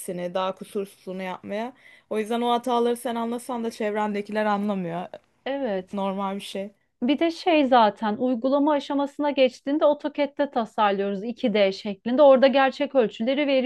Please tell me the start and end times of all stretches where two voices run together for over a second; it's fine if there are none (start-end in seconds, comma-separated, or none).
none